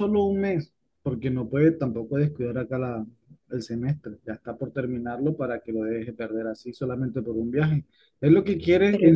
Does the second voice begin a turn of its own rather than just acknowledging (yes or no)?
no